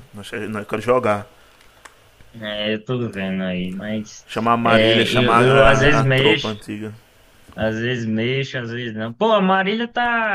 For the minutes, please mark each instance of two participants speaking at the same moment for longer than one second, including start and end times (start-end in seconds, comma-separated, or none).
4.6-6.5